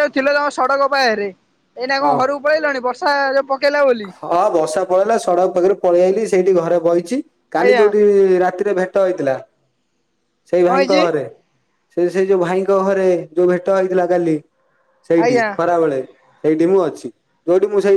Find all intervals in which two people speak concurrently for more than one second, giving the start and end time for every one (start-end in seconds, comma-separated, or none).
none